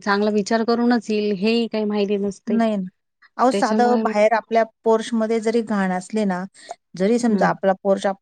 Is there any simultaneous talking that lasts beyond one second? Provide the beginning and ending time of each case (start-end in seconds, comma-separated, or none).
none